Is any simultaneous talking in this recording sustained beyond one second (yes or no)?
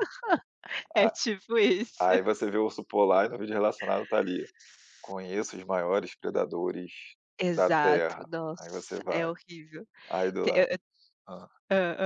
yes